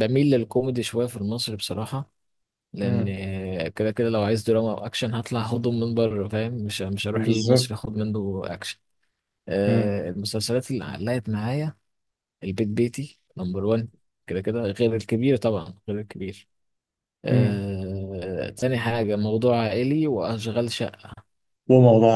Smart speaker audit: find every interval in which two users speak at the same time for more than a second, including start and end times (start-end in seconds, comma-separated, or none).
none